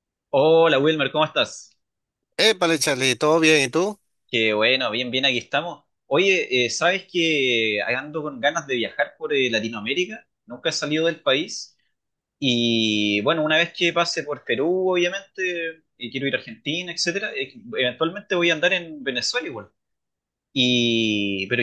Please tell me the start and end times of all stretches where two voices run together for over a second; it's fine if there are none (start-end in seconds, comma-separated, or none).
none